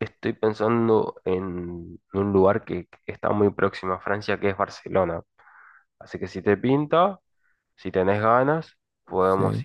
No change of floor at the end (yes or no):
yes